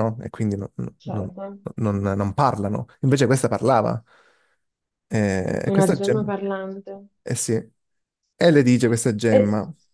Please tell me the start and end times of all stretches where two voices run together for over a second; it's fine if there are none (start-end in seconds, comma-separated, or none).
none